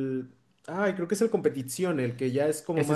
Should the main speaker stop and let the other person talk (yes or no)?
yes